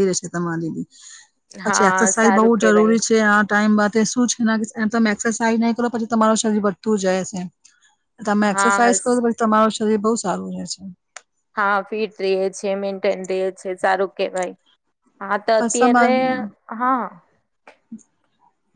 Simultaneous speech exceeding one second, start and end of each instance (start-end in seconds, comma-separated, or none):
1.6-3.0